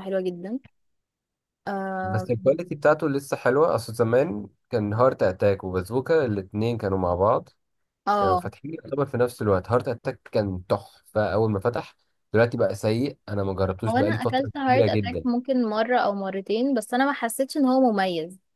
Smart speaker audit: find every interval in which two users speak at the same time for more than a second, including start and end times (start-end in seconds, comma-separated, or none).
13.9-15.3